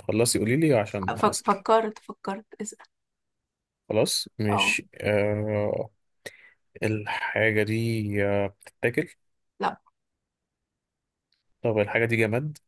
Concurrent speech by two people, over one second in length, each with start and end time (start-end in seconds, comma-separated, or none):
none